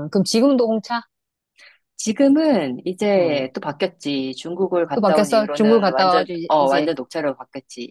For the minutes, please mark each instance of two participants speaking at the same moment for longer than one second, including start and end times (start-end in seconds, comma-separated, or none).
4.9-6.9